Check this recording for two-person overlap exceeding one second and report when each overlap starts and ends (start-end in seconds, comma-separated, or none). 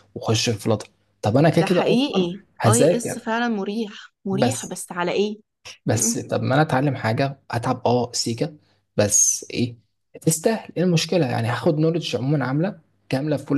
1.6-3.3